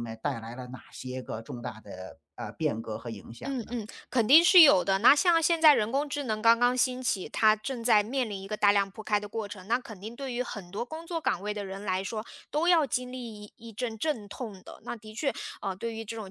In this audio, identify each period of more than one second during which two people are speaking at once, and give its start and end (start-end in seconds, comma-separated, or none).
none